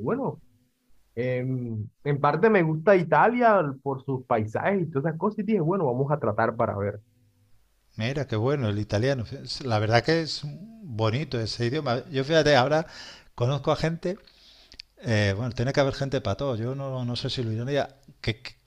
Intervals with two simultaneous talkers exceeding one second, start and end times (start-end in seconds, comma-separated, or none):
none